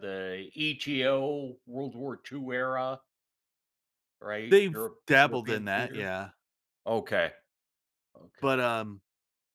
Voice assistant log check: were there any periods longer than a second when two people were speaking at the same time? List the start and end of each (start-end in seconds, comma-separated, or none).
4.5-6.1